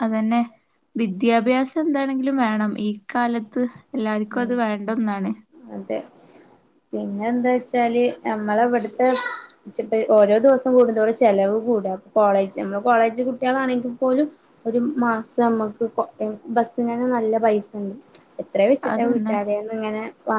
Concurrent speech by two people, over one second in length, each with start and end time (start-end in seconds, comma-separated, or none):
none